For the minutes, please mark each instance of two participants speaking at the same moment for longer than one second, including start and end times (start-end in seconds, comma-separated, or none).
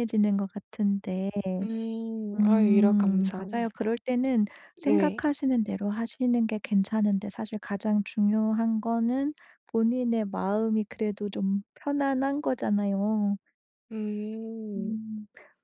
2.4-3.9